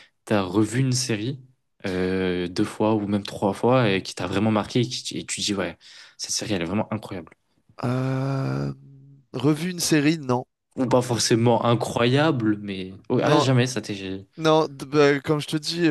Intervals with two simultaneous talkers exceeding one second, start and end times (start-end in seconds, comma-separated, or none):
none